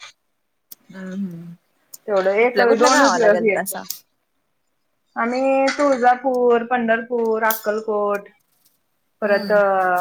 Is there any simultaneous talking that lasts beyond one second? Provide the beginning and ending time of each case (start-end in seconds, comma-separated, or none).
2.4-3.8